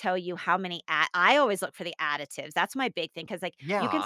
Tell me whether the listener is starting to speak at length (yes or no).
no